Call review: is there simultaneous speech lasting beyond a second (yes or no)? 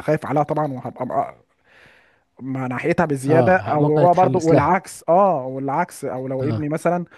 yes